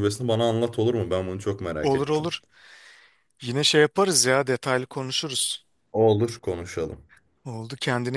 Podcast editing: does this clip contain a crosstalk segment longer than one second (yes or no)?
no